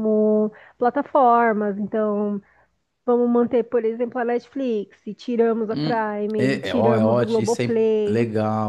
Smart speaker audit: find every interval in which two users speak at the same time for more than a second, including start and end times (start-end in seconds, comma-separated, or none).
5.7-8.2